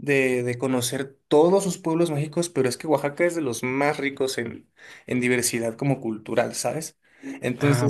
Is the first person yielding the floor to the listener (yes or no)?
no